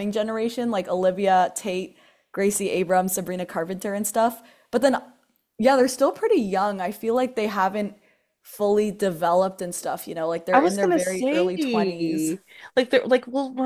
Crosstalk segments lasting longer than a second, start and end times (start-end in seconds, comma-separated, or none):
10.5-12.3